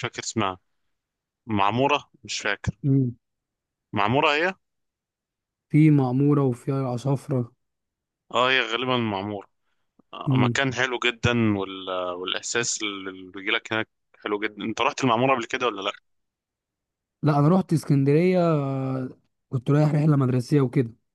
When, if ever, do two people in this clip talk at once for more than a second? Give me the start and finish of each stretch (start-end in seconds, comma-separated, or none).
none